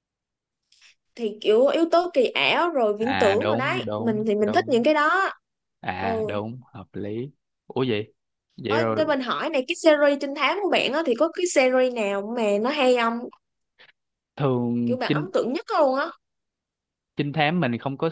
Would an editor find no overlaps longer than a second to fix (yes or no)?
no